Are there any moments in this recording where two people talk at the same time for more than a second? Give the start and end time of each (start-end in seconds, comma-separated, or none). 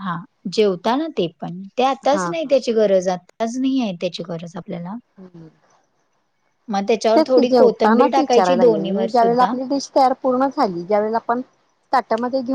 7.1-9.5